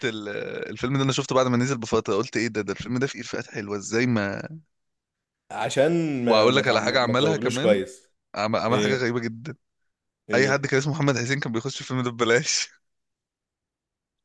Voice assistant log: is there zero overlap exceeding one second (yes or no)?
no